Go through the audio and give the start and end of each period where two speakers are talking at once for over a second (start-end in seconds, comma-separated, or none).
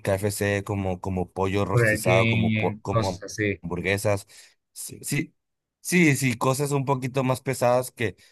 1.7-3.2